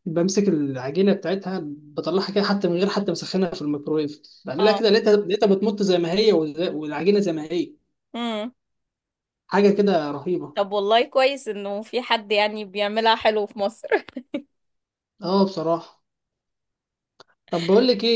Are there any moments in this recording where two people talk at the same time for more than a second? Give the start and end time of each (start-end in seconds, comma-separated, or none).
none